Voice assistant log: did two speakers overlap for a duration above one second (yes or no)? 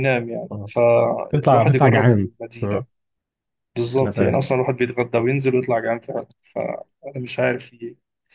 yes